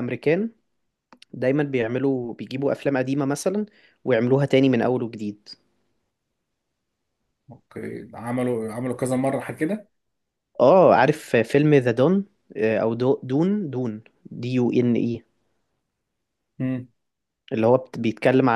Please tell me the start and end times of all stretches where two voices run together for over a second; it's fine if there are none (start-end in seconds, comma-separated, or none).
none